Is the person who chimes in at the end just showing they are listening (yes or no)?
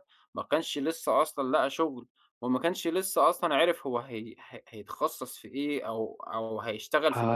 no